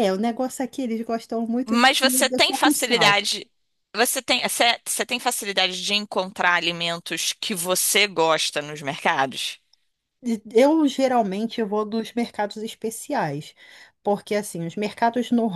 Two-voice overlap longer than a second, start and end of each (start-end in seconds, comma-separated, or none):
1.7-3.2